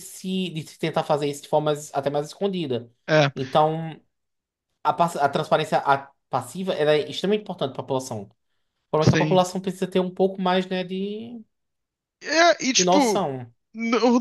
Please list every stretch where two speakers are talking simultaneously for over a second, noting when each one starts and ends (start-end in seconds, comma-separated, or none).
none